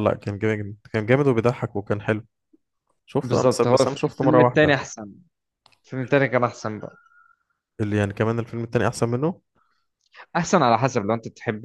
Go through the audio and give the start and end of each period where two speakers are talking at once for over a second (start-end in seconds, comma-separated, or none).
3.2-4.7